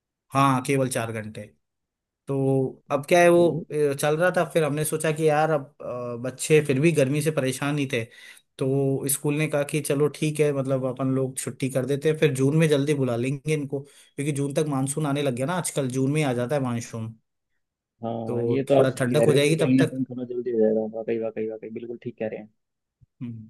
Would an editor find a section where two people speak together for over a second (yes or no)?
yes